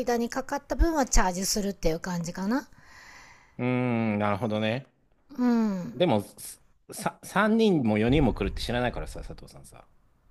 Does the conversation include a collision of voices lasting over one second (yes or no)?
no